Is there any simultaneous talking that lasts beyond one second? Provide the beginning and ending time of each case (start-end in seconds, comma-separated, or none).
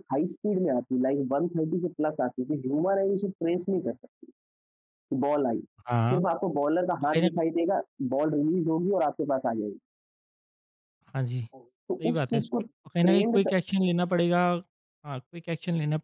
11.5-13.6